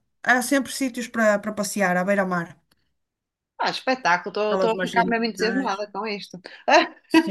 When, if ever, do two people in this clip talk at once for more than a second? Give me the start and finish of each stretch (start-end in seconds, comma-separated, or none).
4.5-5.8